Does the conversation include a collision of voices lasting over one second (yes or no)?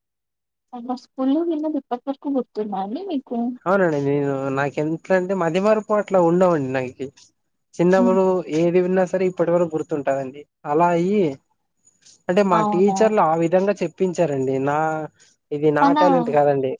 no